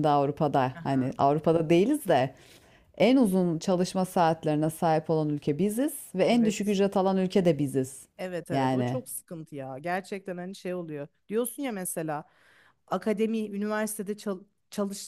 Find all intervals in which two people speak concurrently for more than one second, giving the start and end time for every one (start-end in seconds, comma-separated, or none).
none